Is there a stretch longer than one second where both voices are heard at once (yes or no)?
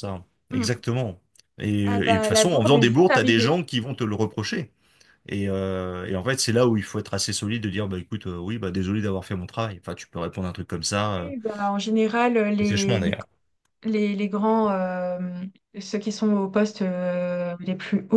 yes